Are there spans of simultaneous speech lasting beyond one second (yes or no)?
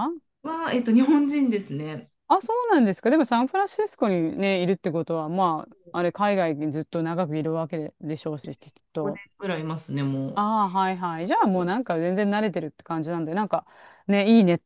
no